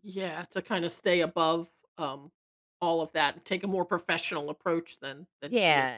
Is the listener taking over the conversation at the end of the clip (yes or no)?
yes